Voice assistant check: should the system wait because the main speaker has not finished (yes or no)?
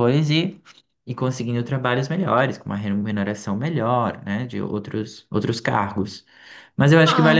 yes